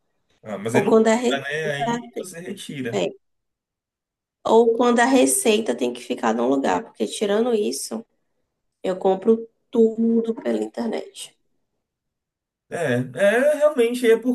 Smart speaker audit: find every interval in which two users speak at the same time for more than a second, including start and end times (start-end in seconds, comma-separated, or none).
0.7-2.0